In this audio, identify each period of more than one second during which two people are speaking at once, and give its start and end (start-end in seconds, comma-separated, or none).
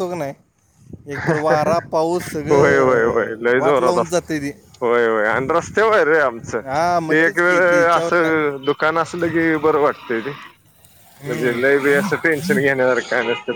2.5-4.3, 6.6-8.3